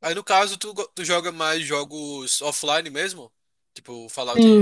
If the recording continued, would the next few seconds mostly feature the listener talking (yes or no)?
yes